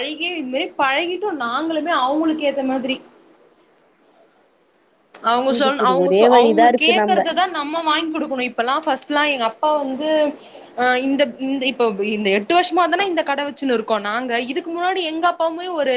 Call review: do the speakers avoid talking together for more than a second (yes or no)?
no